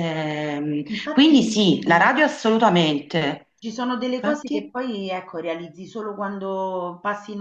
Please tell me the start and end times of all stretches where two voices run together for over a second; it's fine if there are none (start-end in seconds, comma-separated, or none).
none